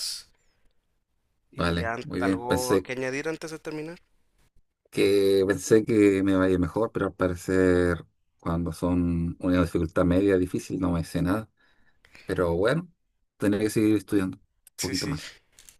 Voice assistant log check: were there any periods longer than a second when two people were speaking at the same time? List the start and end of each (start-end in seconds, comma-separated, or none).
1.5-2.9